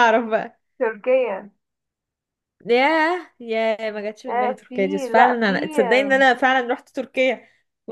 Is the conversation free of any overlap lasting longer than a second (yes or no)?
no